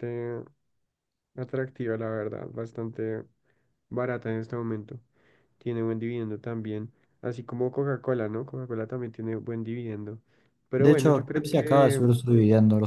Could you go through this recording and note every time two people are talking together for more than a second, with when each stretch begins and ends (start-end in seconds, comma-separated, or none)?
10.8-12.0